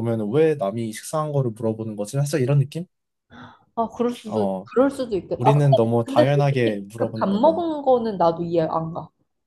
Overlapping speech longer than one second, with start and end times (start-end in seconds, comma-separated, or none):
5.4-7.6